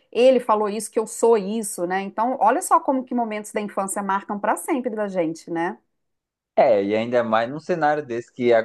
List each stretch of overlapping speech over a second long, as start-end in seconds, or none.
none